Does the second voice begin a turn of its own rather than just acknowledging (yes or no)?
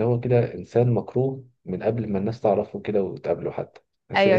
yes